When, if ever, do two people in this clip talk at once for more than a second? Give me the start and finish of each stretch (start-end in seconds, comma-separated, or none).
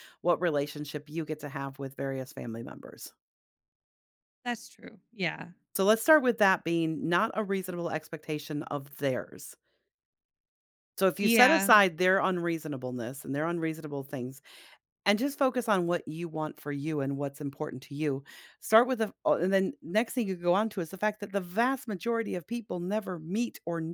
none